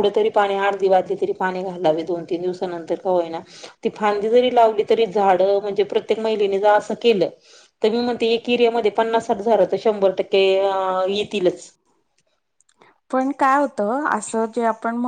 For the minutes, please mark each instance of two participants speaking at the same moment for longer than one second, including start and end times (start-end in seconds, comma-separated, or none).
none